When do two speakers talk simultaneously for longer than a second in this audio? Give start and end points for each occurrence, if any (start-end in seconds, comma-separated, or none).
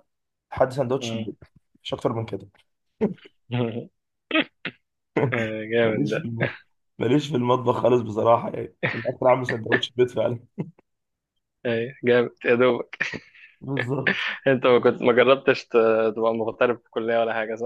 none